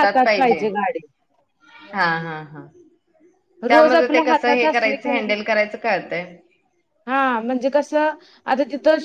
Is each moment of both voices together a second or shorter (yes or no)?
no